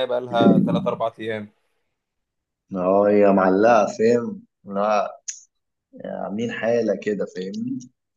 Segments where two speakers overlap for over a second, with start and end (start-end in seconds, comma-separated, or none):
none